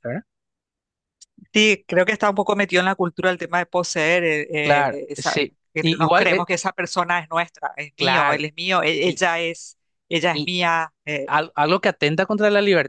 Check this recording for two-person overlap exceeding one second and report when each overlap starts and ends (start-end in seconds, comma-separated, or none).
4.6-6.5